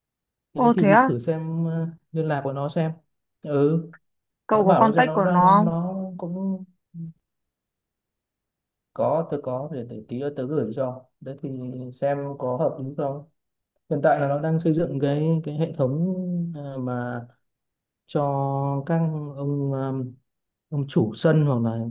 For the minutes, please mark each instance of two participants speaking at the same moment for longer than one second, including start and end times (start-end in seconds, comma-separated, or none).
4.5-5.8